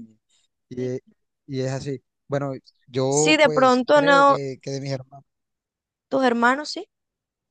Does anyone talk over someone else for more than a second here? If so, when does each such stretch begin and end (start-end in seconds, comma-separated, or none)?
3.1-4.4